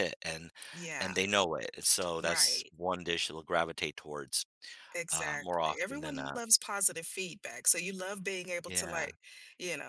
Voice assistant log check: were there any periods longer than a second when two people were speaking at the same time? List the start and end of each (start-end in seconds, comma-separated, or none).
5.1-6.4